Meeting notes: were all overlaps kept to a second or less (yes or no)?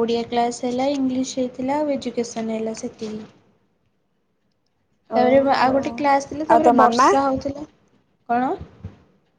no